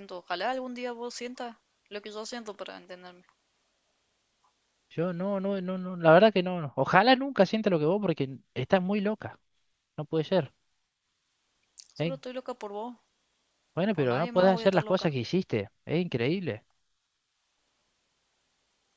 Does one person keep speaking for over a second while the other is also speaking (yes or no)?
yes